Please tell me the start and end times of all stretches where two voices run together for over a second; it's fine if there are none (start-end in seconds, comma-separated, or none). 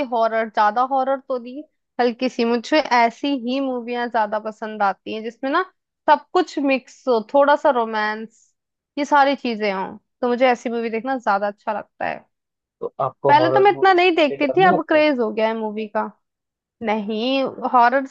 13.3-15.0